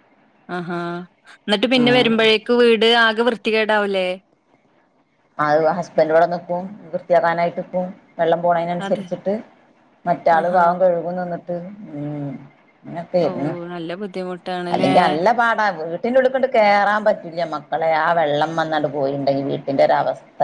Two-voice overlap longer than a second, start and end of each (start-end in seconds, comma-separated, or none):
none